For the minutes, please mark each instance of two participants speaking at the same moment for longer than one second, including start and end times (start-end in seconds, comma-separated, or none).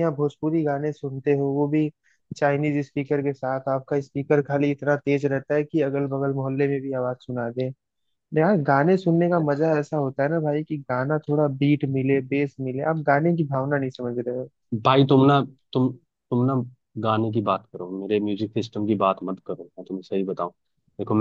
none